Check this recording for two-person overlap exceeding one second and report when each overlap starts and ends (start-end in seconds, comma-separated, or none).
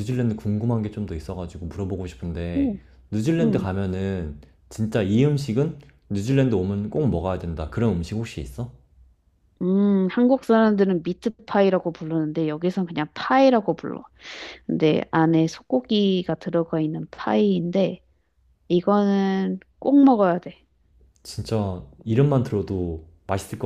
none